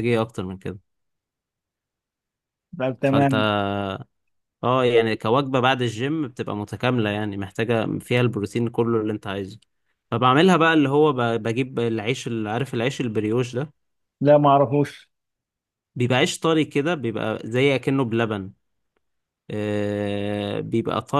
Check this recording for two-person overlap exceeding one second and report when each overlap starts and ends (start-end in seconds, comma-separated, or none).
none